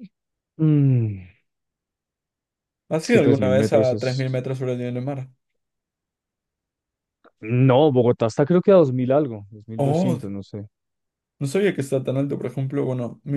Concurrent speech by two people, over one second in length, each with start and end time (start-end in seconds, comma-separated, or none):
3.0-4.4